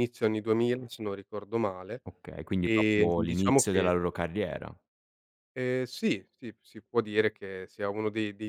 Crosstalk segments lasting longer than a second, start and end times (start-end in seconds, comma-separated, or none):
2.6-3.9